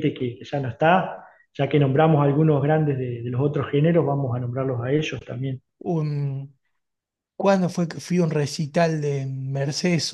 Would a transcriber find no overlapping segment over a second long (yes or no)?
yes